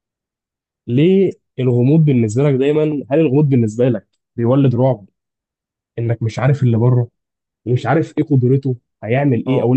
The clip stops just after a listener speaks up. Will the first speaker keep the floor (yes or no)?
no